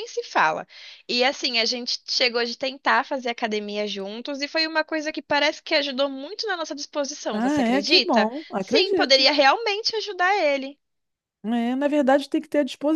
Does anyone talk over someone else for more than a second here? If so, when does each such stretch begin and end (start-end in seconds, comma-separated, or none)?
7.3-9.3